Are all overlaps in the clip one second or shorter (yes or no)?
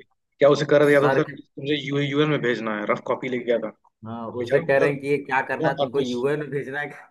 no